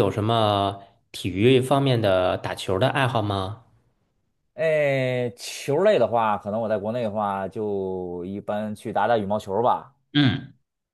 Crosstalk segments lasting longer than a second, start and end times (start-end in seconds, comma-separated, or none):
none